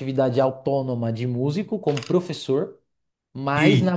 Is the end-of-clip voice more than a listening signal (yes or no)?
no